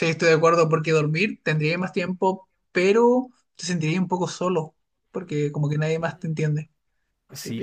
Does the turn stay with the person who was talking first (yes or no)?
no